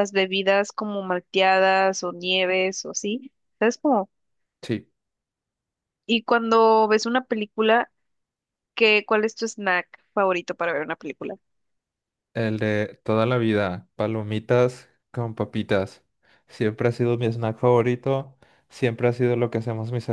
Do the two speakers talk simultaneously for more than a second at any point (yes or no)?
no